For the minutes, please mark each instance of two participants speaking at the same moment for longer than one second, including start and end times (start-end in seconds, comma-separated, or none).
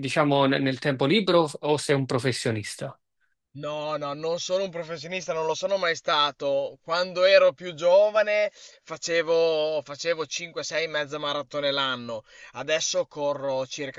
none